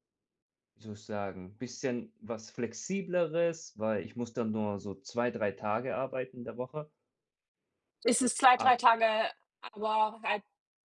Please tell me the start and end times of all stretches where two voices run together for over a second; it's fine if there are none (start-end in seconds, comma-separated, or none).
none